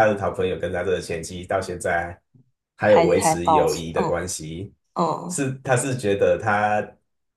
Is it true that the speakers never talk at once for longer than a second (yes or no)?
no